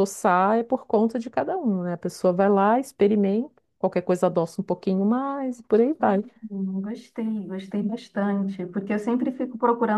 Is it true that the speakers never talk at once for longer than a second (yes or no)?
yes